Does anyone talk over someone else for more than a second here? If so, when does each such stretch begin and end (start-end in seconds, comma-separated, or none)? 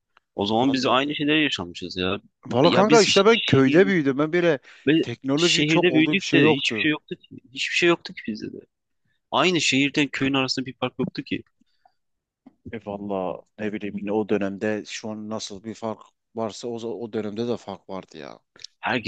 2.6-3.9, 5.0-6.9